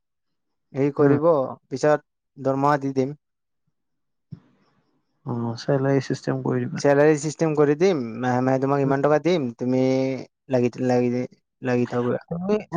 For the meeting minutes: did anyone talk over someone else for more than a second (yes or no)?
no